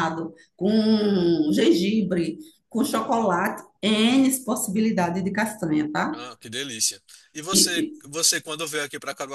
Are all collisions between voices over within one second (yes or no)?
yes